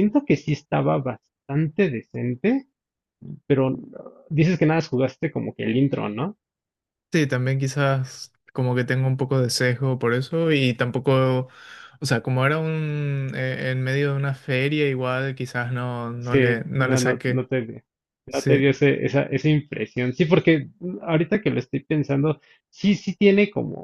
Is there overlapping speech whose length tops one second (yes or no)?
yes